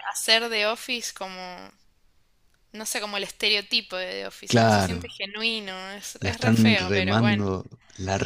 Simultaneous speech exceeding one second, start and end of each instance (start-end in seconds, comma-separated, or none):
6.2-7.5